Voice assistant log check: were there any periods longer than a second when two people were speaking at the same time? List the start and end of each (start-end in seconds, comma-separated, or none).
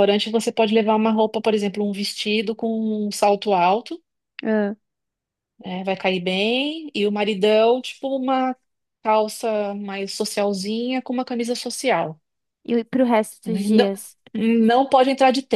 none